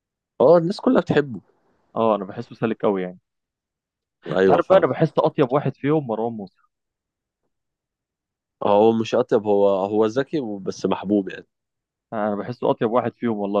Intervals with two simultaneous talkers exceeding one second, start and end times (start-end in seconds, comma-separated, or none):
none